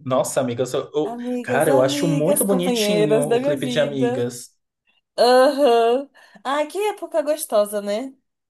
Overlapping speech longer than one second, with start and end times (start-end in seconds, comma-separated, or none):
1.0-4.3